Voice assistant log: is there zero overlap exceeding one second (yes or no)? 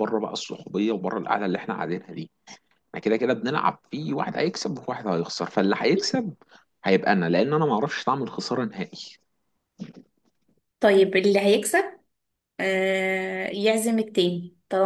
yes